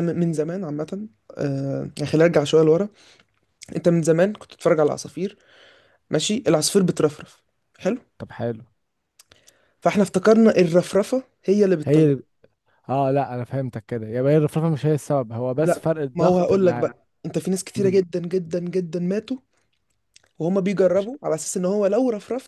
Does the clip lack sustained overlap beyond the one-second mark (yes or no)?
no